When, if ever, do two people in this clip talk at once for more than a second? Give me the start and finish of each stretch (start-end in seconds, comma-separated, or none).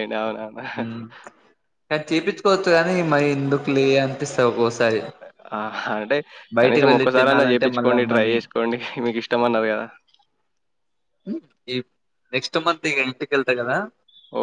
6.6-8.3